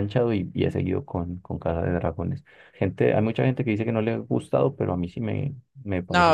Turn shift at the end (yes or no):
yes